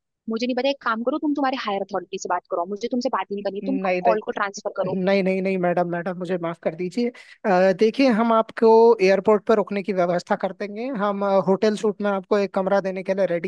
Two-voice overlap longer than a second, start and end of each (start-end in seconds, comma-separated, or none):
none